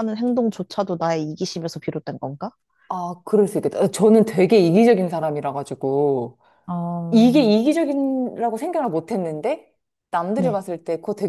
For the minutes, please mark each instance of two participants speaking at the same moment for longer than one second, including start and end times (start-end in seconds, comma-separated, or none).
none